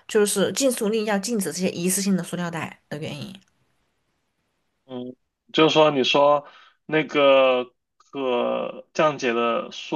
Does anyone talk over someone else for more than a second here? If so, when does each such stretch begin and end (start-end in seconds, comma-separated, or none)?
none